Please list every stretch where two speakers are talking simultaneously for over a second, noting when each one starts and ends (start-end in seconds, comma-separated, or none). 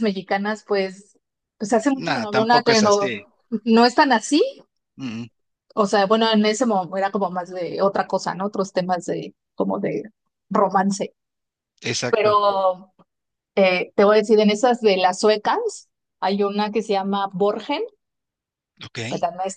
1.9-3.2